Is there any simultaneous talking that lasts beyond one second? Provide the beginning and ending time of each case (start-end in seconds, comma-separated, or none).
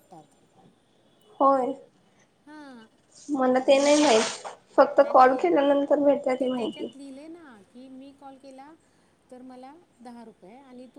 none